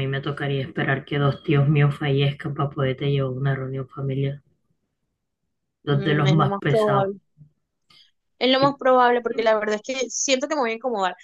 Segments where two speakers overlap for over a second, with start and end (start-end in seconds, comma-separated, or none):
5.8-7.1